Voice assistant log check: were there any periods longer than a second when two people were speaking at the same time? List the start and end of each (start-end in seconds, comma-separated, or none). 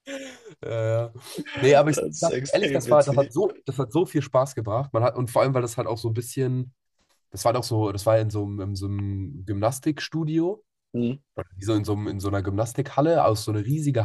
1.9-3.3